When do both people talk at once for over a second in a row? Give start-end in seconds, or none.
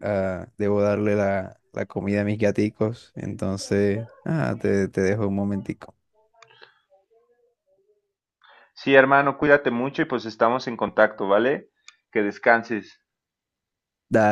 none